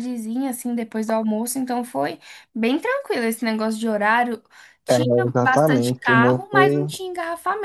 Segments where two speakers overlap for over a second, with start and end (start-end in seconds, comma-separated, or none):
4.9-6.8